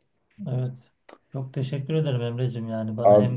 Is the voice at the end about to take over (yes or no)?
no